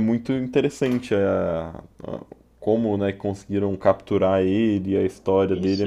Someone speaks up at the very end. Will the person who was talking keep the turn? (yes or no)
no